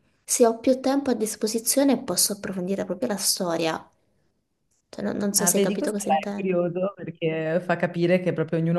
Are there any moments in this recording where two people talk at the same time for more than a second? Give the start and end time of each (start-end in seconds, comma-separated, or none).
5.4-6.6